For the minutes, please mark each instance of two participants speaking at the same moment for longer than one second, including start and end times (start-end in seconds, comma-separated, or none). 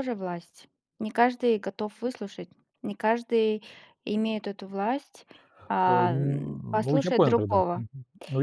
5.9-7.8